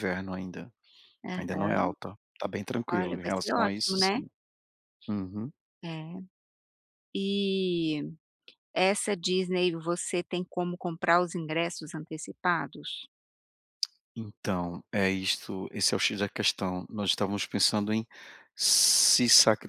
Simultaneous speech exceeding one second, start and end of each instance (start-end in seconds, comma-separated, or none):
2.9-4.2